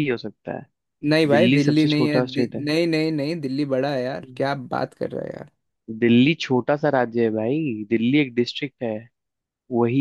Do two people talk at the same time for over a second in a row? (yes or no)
yes